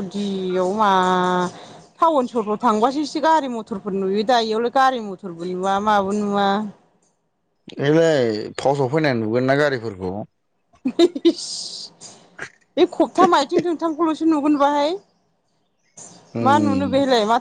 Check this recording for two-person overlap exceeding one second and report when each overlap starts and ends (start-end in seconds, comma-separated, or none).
none